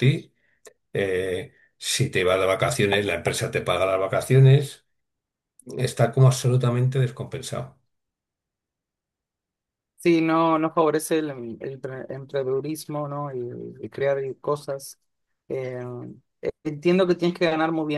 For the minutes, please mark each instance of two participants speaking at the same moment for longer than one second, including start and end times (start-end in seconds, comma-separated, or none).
none